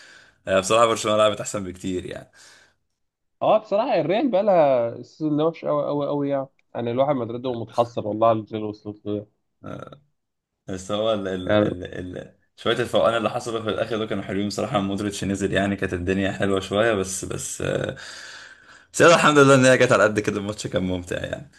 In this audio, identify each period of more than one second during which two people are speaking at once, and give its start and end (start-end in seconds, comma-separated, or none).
none